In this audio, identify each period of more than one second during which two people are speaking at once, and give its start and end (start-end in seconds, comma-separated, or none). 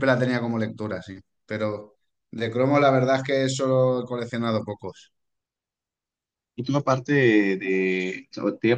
none